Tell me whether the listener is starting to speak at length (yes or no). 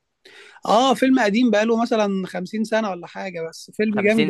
yes